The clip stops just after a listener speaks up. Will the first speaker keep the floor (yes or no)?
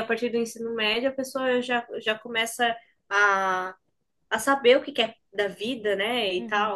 no